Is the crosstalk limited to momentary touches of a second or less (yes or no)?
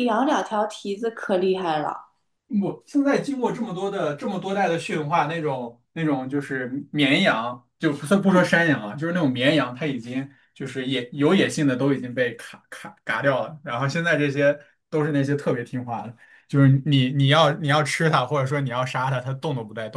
yes